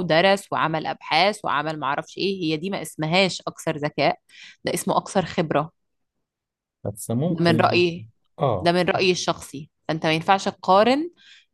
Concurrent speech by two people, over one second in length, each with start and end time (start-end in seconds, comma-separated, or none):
none